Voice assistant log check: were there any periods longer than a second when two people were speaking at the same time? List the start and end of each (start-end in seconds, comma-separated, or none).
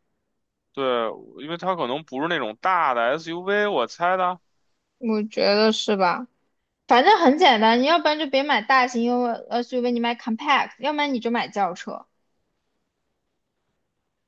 none